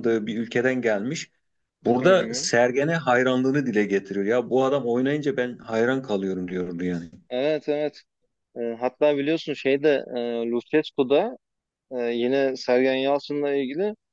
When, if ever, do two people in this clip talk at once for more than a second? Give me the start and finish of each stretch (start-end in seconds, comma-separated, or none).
none